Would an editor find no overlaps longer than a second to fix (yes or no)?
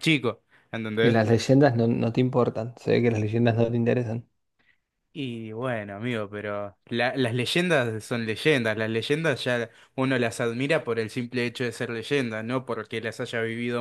yes